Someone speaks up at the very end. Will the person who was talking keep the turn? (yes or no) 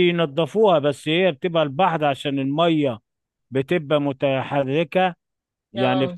yes